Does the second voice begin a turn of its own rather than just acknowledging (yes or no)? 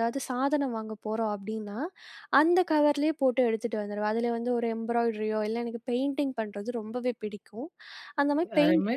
no